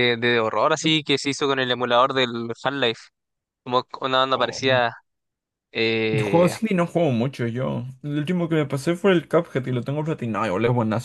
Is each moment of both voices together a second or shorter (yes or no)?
yes